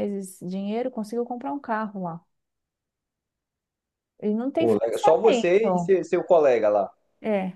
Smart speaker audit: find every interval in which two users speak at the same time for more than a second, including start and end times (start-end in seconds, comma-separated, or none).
4.6-6.0